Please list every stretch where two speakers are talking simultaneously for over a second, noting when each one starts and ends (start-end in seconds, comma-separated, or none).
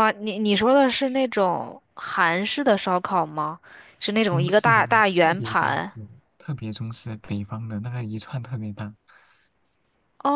4.3-5.9